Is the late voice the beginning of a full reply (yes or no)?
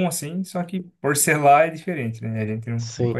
yes